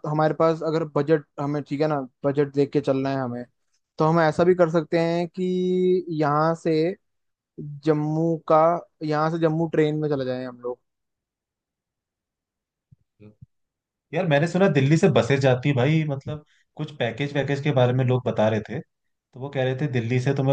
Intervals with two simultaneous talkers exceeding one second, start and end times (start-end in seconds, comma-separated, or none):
none